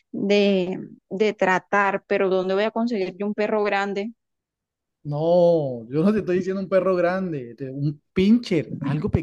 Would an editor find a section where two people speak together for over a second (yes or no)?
no